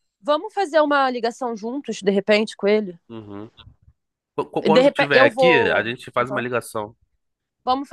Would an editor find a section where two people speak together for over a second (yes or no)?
yes